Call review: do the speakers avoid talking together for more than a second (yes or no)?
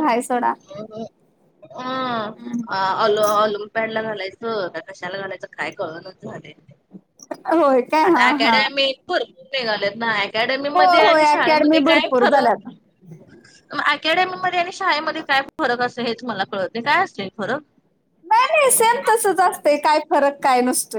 no